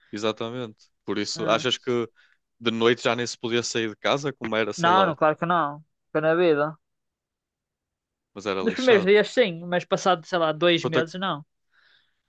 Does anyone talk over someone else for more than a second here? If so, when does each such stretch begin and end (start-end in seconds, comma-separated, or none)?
none